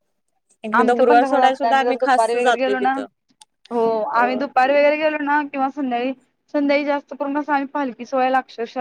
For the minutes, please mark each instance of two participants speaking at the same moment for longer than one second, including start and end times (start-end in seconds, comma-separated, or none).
0.8-3.0